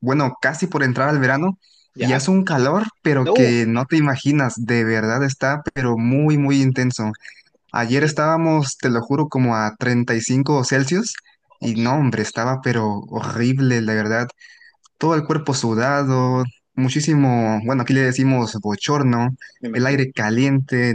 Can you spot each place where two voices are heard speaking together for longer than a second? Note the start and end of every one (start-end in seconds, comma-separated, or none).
none